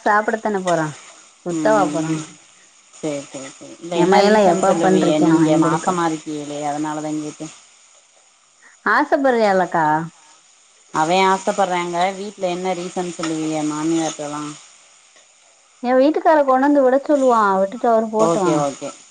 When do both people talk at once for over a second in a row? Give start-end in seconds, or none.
4.0-5.9